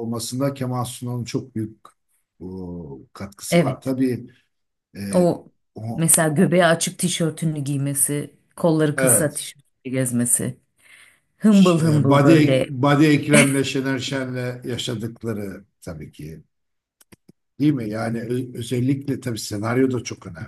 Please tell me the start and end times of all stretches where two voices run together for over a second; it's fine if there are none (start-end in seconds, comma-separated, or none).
11.5-12.7